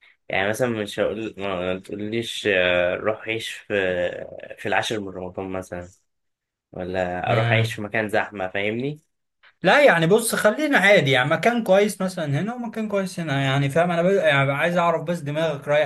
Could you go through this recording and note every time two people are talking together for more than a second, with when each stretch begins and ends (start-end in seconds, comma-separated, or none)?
none